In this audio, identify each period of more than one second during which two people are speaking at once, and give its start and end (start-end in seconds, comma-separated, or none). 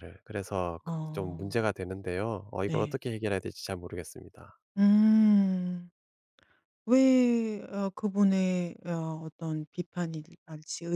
none